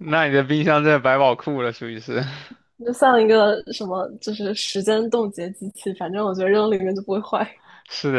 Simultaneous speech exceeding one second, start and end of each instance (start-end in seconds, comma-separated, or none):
none